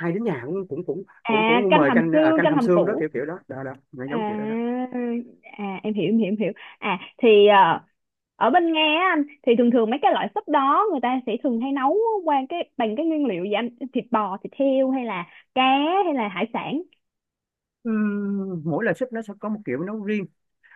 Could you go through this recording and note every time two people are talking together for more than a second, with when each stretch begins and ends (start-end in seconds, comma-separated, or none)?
1.2-3.1